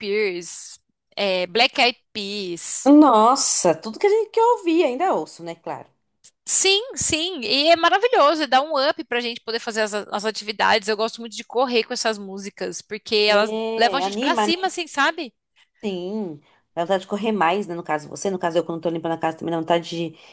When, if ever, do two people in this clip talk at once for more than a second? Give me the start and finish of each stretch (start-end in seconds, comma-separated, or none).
13.3-14.5